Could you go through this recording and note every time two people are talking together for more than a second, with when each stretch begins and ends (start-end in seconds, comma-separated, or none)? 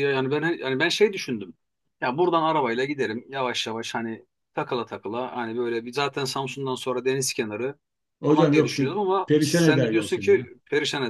8.3-10.5